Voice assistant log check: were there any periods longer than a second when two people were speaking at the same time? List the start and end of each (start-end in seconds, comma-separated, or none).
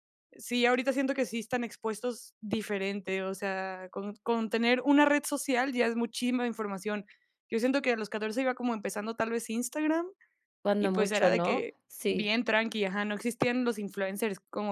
10.8-12.3